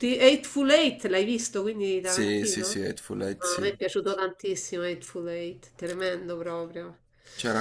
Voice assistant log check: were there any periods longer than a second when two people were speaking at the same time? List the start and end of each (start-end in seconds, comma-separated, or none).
2.0-3.7